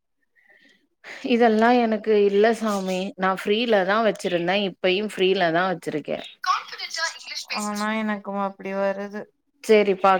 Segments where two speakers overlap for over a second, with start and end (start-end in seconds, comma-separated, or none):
none